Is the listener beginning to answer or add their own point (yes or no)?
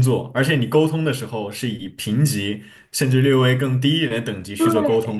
yes